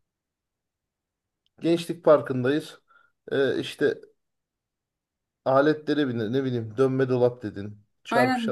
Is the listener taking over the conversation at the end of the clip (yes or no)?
yes